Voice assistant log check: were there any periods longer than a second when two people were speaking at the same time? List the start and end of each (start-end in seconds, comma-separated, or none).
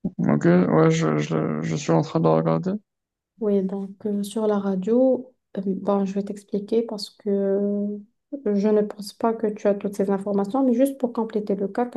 none